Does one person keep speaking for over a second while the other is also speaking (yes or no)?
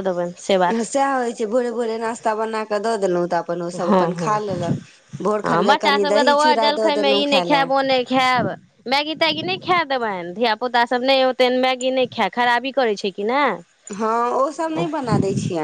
yes